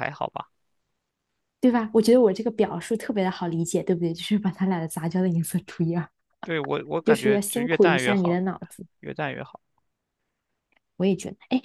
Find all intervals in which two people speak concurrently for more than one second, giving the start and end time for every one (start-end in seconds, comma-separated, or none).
7.0-8.4